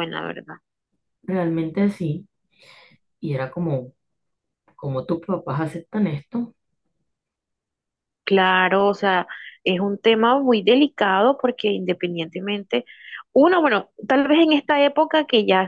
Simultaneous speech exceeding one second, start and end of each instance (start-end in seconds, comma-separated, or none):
none